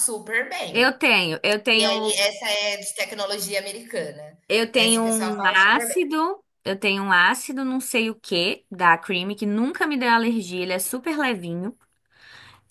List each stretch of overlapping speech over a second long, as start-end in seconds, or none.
4.8-6.0